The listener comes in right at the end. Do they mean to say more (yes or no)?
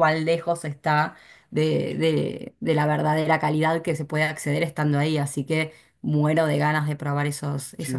yes